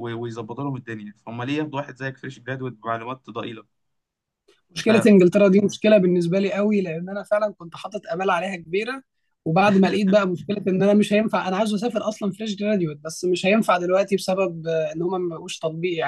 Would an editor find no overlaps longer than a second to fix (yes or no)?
yes